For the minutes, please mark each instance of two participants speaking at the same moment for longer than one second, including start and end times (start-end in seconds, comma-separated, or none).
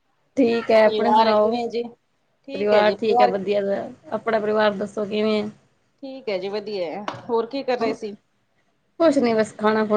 none